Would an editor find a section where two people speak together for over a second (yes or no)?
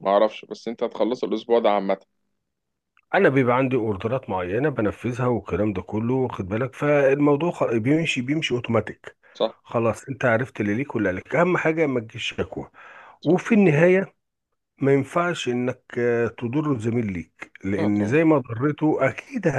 no